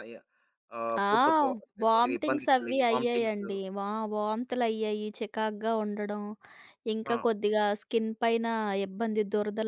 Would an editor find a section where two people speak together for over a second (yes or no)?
yes